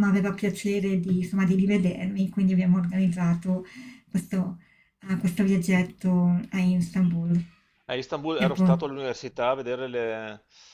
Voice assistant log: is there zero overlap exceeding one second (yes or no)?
yes